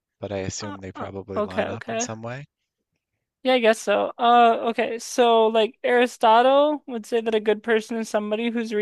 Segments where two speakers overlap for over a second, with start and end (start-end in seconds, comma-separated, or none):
0.6-2.1